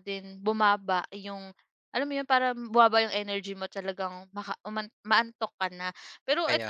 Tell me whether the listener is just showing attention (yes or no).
yes